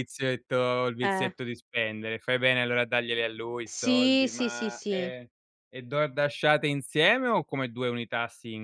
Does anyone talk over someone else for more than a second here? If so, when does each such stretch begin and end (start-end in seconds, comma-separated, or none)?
3.6-5.1